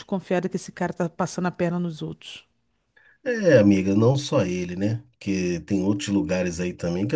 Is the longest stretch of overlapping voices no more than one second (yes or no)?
yes